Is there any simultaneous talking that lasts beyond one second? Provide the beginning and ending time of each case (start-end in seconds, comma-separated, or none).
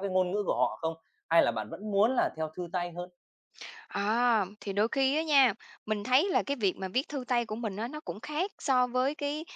none